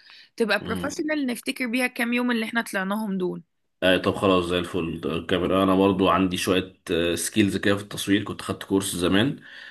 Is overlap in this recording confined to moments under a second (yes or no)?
yes